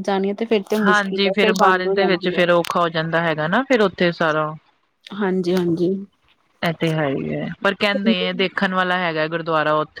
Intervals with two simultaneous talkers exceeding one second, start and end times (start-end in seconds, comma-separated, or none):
0.9-2.4